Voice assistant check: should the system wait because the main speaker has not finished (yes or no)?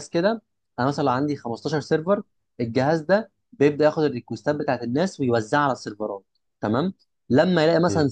yes